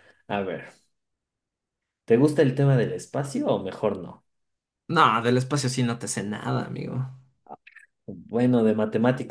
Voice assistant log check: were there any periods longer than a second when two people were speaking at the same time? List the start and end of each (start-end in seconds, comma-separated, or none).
none